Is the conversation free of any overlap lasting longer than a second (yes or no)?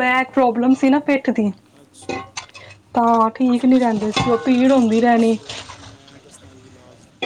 no